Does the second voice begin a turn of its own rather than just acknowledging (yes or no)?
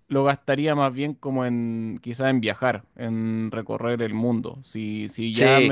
no